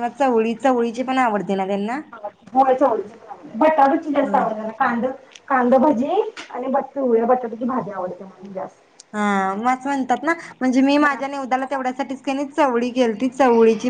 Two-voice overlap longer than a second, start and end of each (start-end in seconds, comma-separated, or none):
none